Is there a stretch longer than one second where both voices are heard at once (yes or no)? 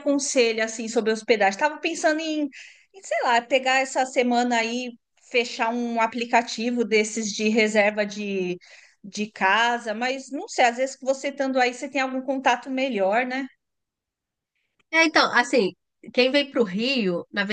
no